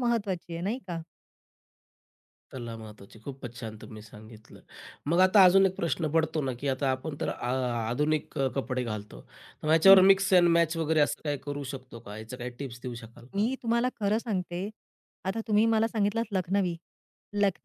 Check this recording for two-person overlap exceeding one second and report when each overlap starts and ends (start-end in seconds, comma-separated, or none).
none